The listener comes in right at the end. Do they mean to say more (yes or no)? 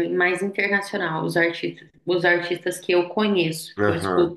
no